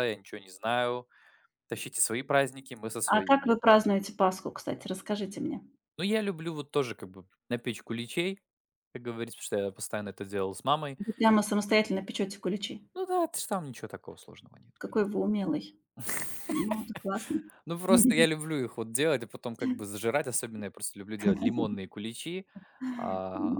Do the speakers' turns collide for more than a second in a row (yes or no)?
no